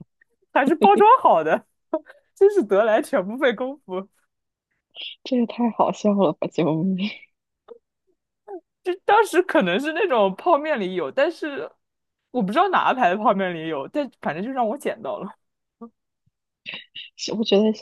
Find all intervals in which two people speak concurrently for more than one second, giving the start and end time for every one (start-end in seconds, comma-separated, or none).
none